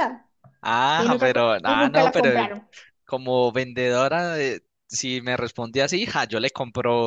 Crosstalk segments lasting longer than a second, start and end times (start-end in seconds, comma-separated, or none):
1.0-2.5